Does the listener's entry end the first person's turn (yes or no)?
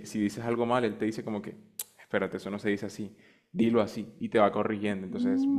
yes